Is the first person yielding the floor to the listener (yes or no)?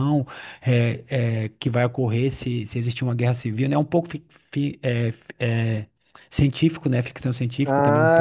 yes